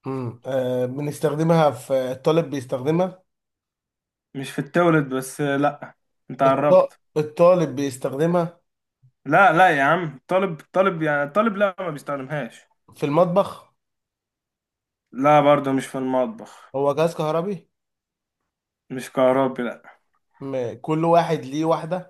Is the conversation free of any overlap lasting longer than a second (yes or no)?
yes